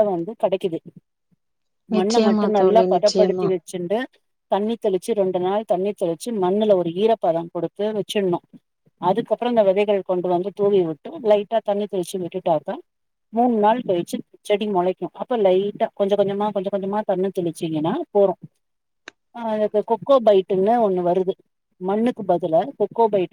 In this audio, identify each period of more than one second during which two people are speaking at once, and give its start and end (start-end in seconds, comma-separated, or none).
2.0-3.5